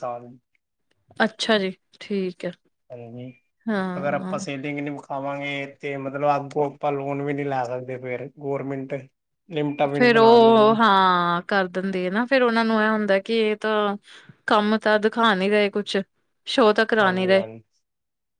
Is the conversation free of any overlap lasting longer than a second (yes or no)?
yes